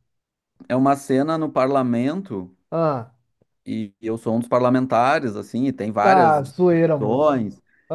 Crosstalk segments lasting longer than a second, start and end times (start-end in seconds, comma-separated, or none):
6.0-7.5